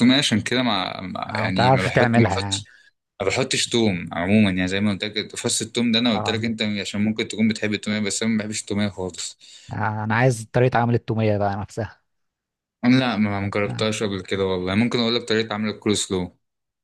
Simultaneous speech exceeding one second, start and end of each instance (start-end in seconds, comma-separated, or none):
1.3-2.6